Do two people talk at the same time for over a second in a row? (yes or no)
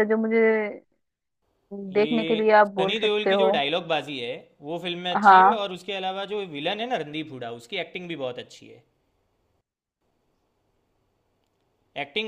yes